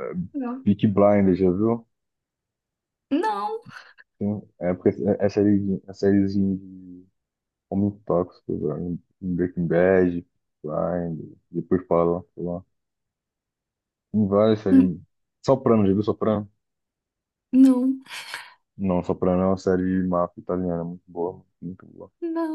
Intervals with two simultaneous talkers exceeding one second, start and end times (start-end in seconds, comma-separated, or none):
none